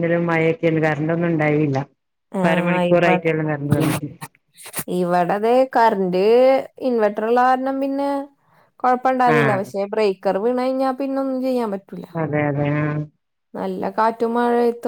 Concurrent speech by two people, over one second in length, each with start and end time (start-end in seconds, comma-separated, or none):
none